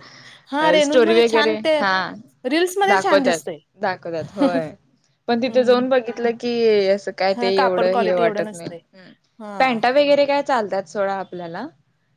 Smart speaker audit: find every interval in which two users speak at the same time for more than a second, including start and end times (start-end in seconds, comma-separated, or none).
7.3-8.7